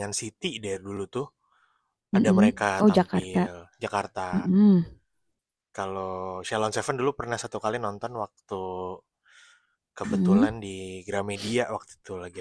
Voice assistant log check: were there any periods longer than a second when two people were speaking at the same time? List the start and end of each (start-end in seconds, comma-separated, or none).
2.1-3.5